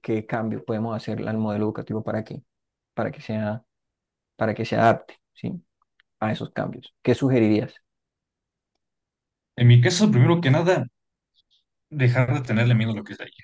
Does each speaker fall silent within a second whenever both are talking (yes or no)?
yes